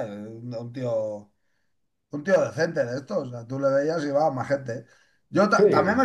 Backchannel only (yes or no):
yes